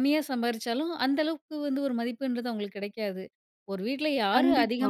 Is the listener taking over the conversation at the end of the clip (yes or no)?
no